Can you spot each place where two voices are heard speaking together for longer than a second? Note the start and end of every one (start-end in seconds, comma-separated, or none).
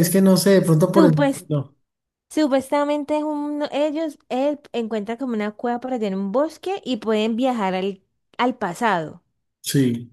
none